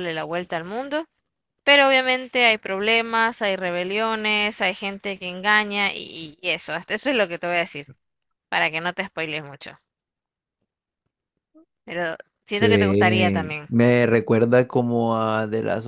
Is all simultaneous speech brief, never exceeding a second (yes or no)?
no